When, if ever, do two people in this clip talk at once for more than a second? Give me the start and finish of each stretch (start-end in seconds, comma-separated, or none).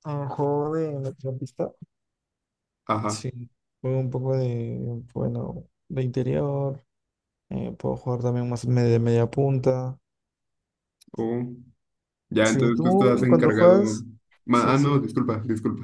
12.4-13.8